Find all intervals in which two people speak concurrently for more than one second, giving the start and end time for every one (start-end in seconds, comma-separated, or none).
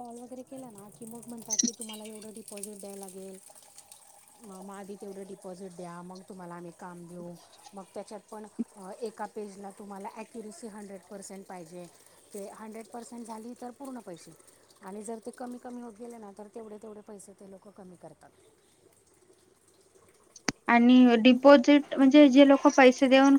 none